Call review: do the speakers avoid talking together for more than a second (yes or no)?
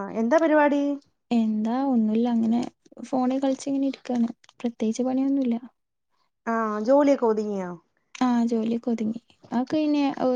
yes